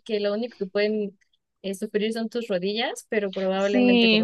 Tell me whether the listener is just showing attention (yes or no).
no